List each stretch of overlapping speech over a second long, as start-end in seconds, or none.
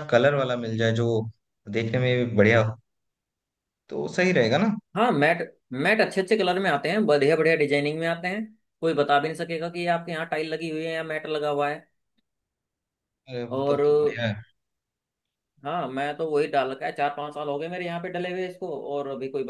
none